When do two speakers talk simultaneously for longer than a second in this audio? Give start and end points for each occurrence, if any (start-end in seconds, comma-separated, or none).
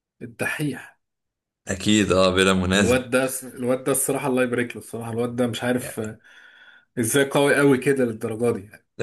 none